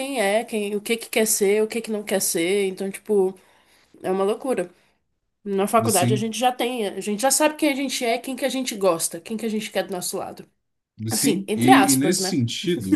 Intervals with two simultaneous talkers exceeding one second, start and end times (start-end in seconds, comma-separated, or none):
11.1-12.4